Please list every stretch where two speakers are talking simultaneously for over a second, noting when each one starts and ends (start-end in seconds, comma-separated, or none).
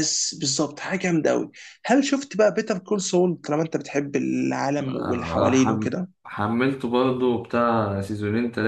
4.8-6.1